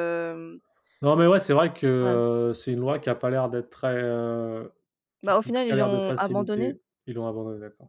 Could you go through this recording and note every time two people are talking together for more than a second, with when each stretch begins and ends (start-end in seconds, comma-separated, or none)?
5.2-6.8